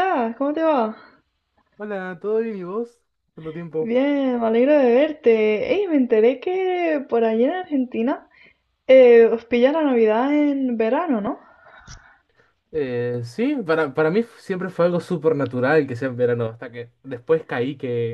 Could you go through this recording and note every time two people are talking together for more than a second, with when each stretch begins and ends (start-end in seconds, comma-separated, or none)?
none